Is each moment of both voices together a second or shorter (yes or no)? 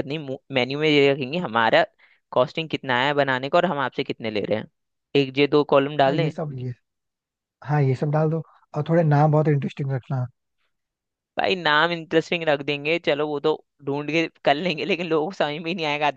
yes